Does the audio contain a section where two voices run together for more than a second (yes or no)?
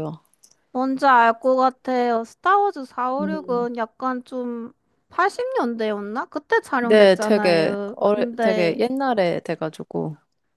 yes